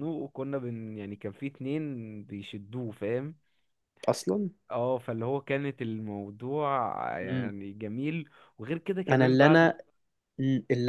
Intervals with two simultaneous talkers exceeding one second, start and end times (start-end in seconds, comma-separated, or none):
none